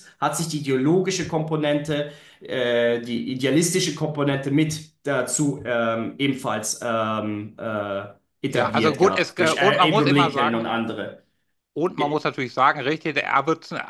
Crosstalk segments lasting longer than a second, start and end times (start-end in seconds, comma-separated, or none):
8.5-10.7